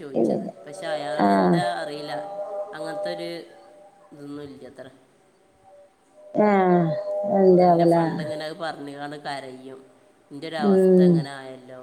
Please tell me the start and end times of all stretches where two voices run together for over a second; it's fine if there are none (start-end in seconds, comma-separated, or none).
none